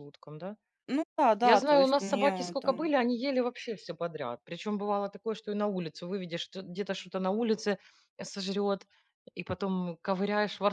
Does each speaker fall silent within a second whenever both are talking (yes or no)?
no